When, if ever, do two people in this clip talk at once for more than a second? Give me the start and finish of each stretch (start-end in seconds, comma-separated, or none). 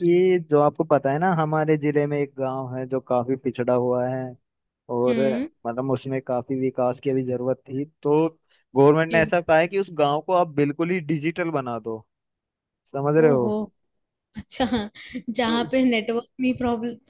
none